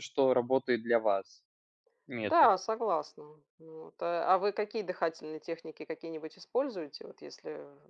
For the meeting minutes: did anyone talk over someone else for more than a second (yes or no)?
no